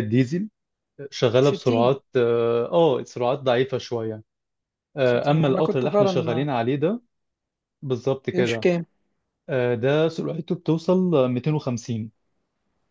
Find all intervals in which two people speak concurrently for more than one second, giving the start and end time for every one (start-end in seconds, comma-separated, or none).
5.0-6.5